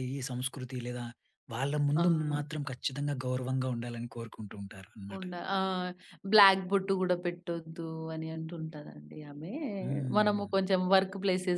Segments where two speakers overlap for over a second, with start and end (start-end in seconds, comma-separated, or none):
none